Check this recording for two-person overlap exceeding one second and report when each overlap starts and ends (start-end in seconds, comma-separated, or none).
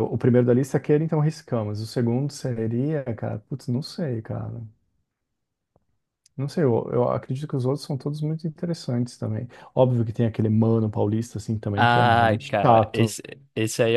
11.7-13.2